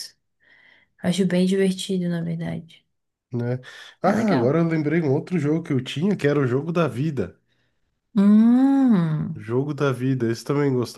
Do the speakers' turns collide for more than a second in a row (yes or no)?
no